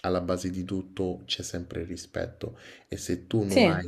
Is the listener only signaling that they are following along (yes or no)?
yes